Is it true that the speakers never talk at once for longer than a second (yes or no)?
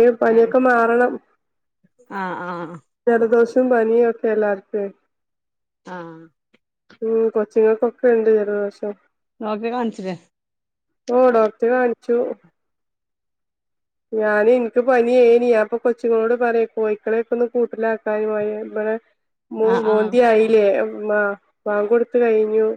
yes